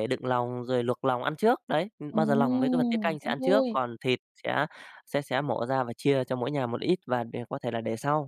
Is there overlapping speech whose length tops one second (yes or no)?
yes